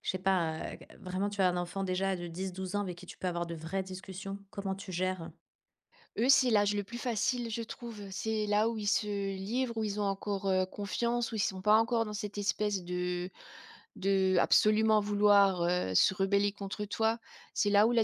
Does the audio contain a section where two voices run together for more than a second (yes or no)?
no